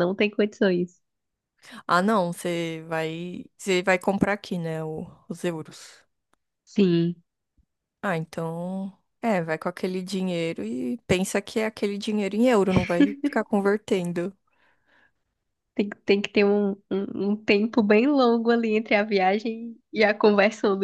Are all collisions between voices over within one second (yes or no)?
yes